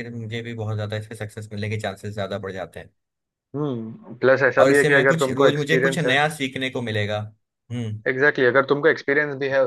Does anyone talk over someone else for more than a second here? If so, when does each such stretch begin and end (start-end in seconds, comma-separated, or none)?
4.6-6.2